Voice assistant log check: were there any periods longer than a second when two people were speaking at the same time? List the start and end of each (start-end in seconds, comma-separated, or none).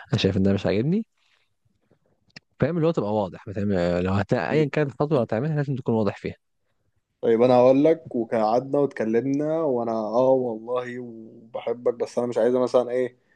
none